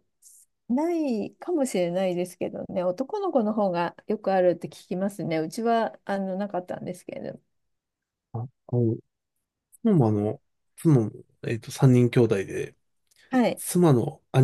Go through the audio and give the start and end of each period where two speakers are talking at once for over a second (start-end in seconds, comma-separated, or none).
none